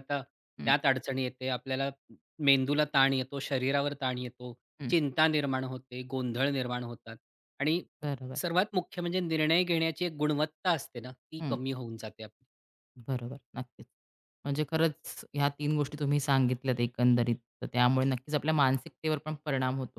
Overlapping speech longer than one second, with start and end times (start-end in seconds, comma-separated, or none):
none